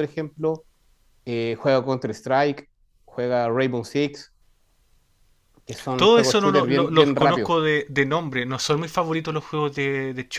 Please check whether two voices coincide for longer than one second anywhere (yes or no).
yes